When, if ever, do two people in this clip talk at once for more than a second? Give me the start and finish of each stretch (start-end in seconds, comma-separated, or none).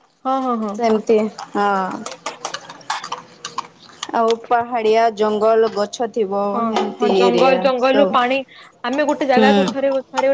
none